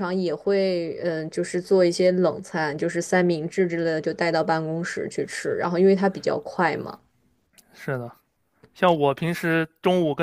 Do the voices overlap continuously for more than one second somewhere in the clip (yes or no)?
no